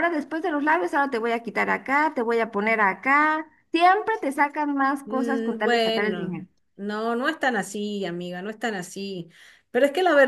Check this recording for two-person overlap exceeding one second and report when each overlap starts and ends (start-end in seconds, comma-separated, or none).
5.0-6.4